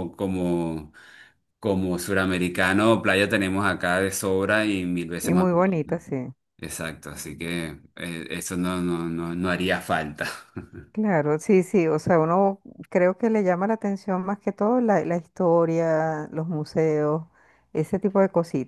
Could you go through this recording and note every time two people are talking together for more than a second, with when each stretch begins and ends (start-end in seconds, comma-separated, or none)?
none